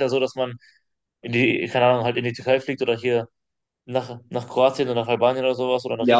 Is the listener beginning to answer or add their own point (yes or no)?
yes